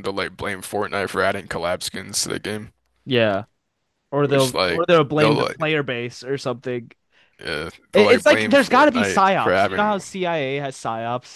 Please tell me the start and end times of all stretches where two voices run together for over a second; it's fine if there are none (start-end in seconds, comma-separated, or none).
4.2-5.6, 7.9-10.0